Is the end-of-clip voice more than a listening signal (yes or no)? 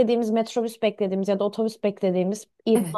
no